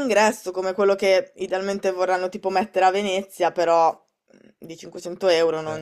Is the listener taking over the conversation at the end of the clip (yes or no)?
no